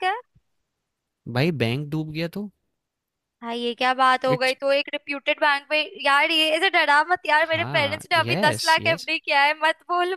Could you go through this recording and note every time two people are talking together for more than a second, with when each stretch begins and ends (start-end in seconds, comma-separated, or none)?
7.5-9.1